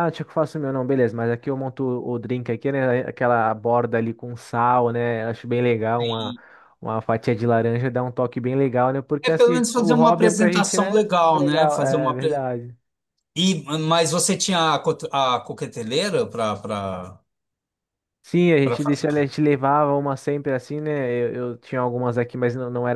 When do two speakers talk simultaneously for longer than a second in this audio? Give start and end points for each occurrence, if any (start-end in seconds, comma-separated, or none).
9.2-12.4